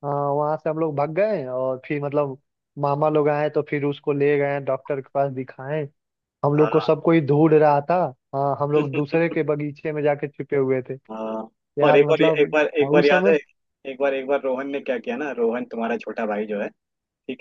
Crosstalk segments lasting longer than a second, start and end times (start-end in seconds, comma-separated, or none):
11.9-13.3